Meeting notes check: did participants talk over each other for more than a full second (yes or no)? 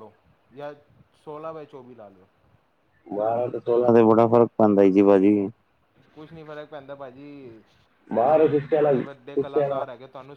yes